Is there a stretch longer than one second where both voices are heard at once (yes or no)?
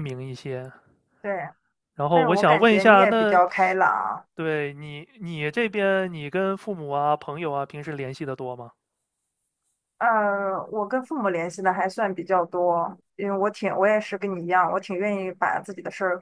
yes